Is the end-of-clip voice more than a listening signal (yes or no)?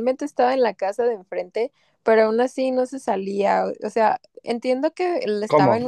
no